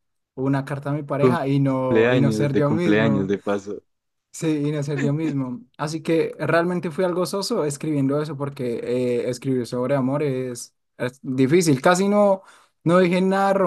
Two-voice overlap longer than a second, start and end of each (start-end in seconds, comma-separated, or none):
1.2-3.3